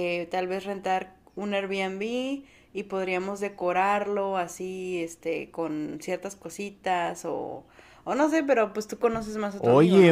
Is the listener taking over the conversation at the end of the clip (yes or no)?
yes